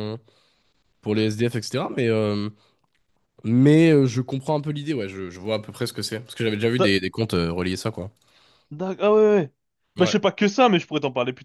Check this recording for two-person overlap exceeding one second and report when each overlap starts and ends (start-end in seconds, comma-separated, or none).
none